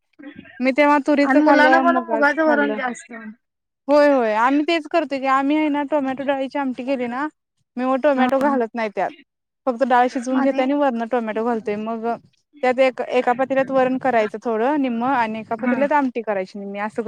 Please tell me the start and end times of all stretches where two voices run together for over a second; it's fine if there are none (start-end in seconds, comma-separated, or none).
1.3-2.8